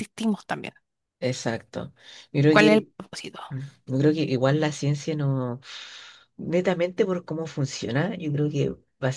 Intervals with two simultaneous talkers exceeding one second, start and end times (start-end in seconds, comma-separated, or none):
none